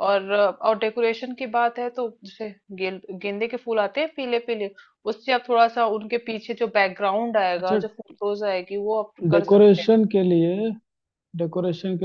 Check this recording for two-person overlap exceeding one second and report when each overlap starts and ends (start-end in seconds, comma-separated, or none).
none